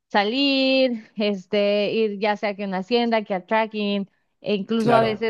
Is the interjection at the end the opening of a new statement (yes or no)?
no